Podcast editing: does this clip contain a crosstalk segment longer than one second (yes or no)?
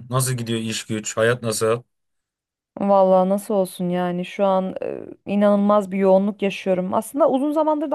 no